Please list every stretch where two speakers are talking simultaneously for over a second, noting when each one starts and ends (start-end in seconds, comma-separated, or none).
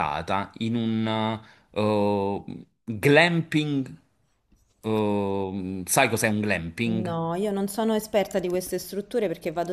none